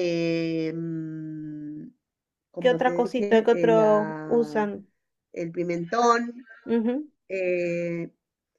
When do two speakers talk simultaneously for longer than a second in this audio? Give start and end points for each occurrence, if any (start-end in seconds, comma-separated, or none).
2.6-4.6